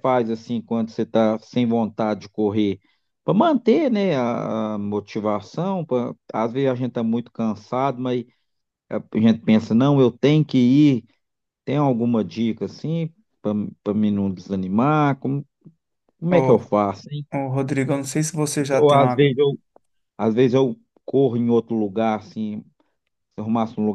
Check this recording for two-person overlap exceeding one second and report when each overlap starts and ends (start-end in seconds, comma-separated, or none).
none